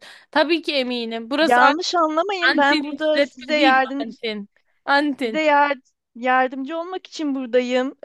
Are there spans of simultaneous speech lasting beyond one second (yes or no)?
yes